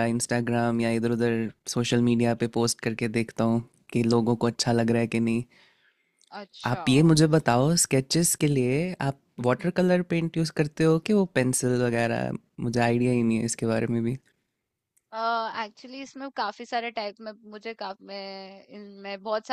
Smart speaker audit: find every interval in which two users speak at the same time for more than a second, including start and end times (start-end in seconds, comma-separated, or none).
none